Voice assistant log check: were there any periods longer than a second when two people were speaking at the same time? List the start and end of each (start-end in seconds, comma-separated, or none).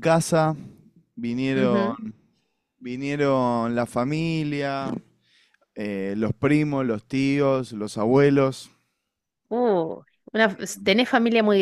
none